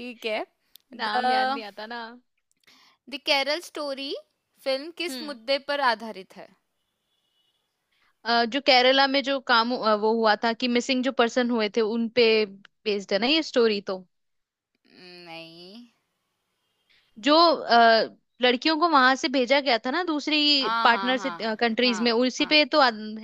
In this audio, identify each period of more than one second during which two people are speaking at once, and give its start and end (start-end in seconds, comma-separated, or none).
20.6-22.6